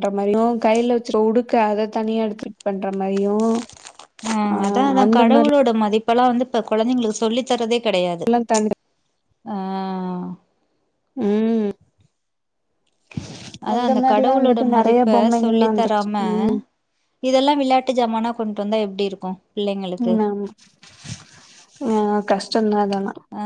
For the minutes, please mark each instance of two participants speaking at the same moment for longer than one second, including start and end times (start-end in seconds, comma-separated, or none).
13.7-16.2